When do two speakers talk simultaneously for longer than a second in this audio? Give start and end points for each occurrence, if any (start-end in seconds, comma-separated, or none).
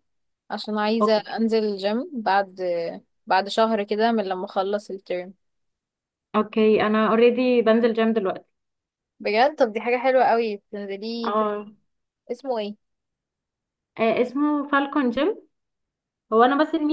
none